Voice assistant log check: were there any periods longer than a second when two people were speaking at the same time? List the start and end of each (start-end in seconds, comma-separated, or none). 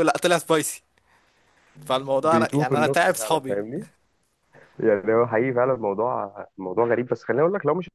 2.2-3.6